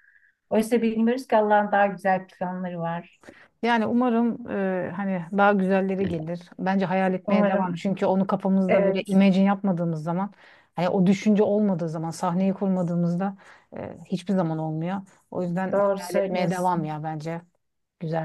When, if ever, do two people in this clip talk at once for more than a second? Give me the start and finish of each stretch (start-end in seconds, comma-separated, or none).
15.7-16.9